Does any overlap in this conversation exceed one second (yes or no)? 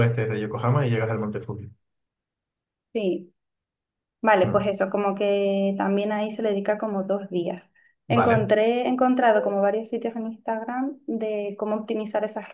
no